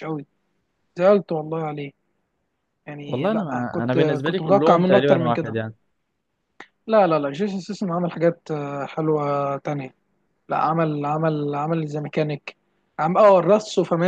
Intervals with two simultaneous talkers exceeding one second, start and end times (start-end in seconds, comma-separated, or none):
3.1-5.6